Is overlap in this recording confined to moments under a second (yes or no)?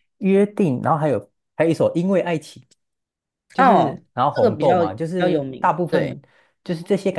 no